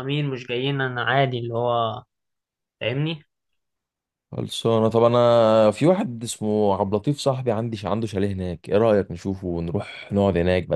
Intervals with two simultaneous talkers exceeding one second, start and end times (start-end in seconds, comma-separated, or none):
none